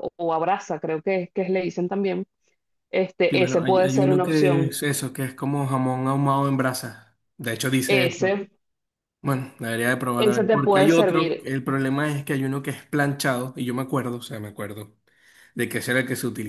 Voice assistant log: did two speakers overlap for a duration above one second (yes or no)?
yes